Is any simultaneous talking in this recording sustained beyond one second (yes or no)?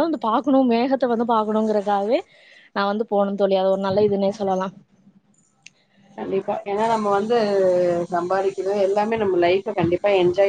no